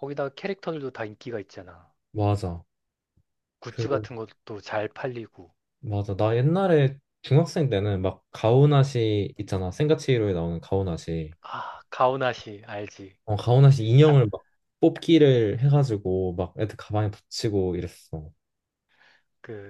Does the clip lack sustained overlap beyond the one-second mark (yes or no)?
yes